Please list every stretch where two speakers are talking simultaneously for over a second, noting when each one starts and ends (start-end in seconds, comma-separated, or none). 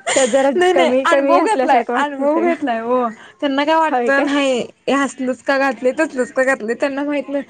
0.6-2.5